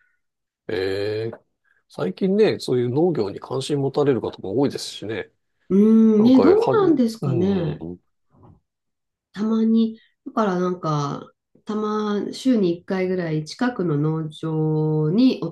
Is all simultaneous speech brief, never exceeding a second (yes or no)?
no